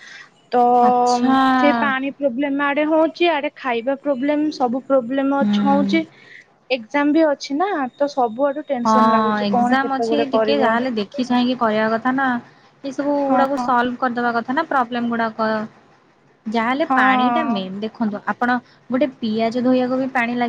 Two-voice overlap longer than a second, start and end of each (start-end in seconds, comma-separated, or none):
8.8-10.6